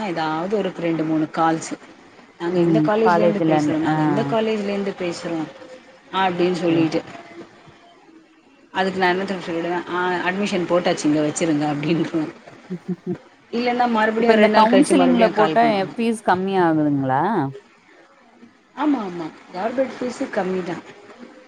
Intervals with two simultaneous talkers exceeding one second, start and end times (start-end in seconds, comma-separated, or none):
14.2-15.6